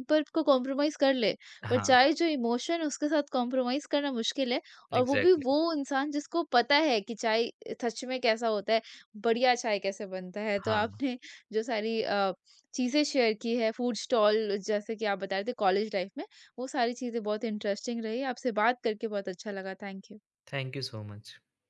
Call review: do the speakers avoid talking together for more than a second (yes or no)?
yes